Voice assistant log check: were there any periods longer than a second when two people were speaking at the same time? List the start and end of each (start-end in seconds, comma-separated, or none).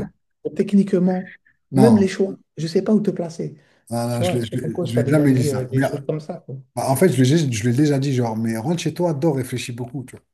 4.1-5.8